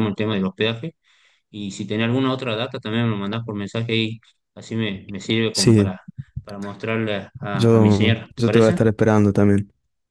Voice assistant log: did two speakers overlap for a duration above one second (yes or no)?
yes